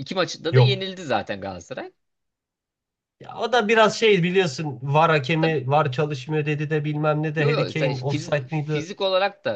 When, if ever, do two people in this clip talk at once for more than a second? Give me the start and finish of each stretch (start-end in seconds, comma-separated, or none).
7.4-8.8